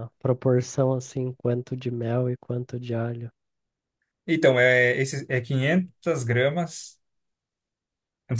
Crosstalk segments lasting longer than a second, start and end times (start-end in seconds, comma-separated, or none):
none